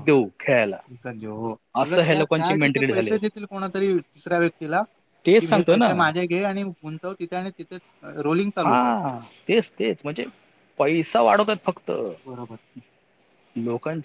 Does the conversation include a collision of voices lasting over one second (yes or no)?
yes